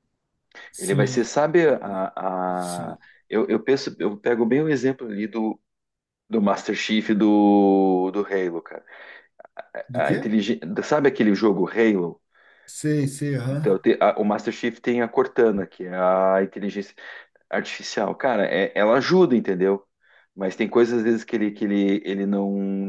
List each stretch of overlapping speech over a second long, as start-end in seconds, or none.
none